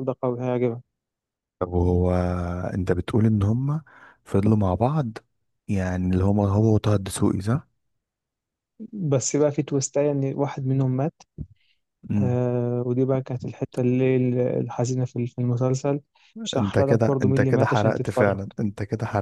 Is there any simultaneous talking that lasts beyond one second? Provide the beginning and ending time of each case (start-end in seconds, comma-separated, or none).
16.6-18.4